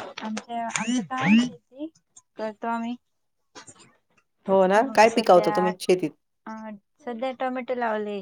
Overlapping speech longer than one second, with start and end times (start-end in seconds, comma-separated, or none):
none